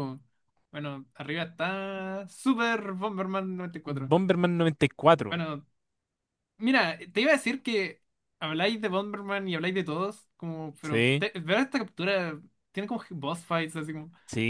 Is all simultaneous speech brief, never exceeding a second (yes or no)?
yes